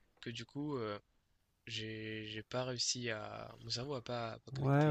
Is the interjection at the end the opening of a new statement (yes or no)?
yes